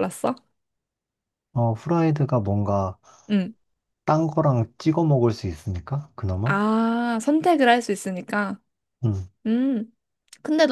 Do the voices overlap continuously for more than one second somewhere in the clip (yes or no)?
no